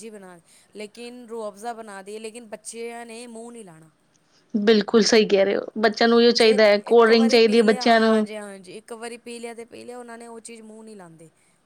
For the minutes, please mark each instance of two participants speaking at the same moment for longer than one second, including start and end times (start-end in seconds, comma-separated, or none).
6.4-8.2